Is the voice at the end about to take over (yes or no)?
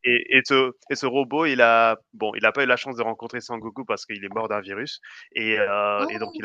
no